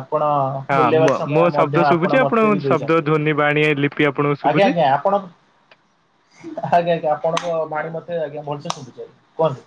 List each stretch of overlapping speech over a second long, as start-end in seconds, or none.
0.8-3.1